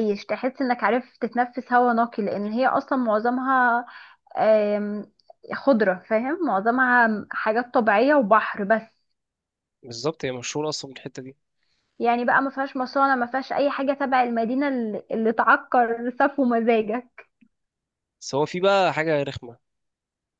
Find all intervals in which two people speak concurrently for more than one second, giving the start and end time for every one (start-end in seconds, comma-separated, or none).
none